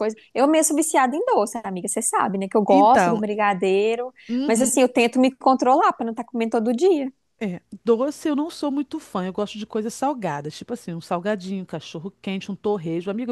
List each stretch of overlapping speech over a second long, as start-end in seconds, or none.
none